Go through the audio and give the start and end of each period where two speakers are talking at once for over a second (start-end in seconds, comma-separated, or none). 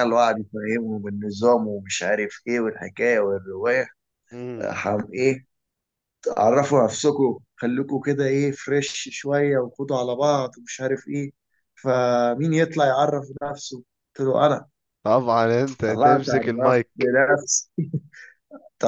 15.9-17.1